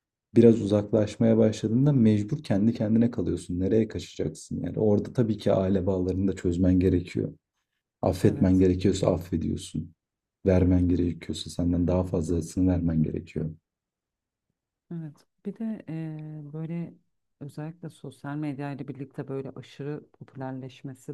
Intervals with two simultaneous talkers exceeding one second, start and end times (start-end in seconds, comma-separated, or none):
none